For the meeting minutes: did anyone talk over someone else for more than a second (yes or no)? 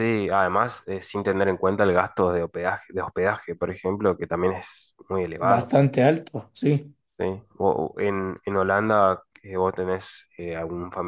no